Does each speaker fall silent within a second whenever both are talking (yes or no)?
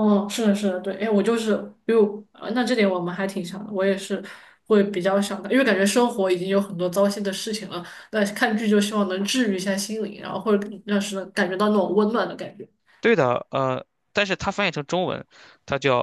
yes